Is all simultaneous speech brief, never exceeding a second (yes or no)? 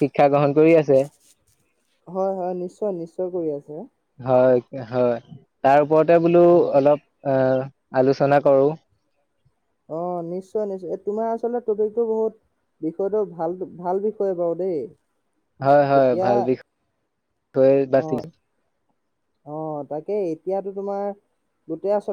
yes